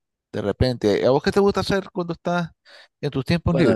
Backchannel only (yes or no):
no